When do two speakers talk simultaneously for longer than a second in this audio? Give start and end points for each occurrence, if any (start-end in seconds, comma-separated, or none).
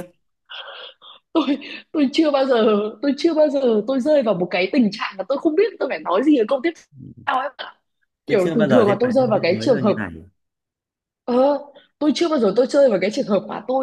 8.3-9.9